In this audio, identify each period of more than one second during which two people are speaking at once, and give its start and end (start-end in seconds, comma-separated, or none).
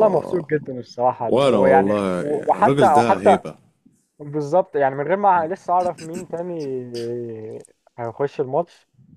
1.3-3.4